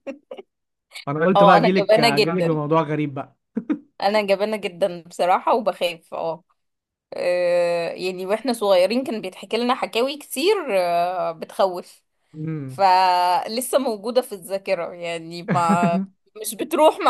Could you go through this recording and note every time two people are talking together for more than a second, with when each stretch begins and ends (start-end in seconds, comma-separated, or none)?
1.4-2.6